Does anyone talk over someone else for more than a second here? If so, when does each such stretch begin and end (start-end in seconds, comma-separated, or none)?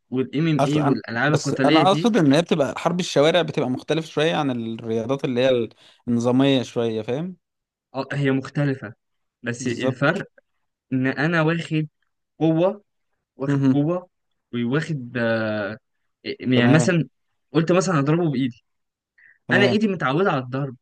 0.6-2.1